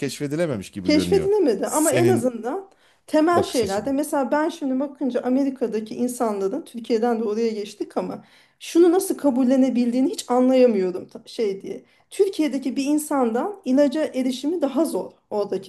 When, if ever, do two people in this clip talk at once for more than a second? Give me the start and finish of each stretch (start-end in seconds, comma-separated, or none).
0.8-2.3